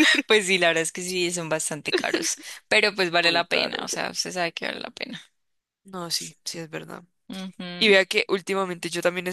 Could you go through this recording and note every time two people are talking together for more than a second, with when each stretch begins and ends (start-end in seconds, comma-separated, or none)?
none